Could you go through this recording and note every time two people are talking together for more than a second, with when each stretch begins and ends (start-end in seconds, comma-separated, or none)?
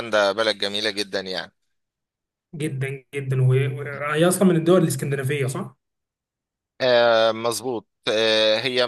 none